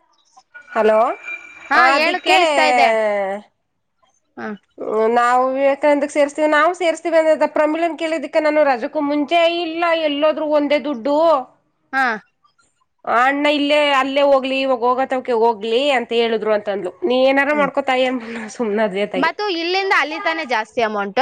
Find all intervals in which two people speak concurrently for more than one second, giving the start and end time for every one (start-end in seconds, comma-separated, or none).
none